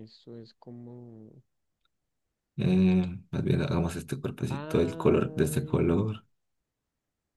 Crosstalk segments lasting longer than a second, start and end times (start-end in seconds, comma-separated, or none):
4.5-5.9